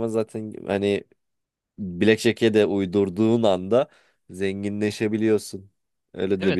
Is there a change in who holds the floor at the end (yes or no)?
yes